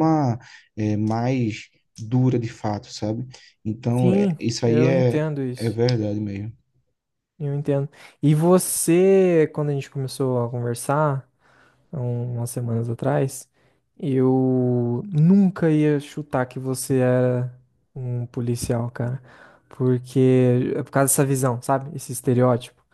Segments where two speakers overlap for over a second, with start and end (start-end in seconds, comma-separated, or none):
4.0-5.8